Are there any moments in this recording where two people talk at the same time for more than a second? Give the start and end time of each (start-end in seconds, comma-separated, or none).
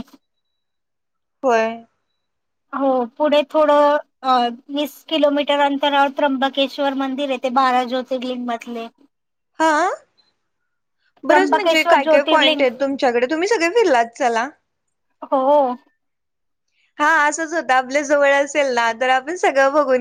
11.3-12.6